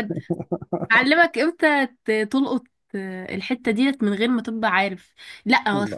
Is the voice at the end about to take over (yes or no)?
no